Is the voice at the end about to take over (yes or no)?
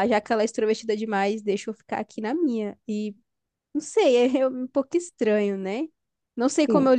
no